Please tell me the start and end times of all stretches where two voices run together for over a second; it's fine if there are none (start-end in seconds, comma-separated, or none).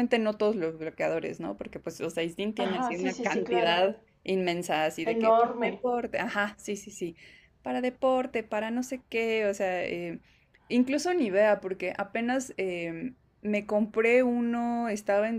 2.6-3.8